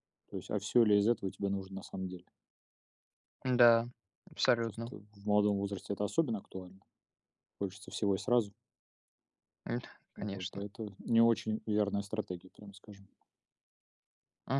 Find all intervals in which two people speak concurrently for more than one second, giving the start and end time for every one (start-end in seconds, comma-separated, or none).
none